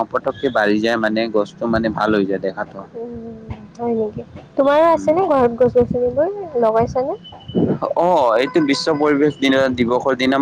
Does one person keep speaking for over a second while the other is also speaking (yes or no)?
no